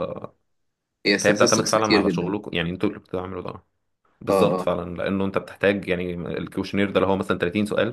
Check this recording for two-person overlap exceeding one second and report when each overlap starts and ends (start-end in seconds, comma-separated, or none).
1.2-2.4